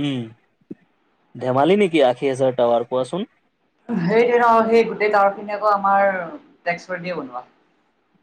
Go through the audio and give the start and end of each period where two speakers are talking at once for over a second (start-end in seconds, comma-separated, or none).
none